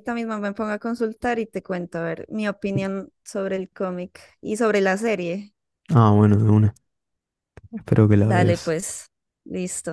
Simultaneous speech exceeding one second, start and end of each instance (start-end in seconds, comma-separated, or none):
none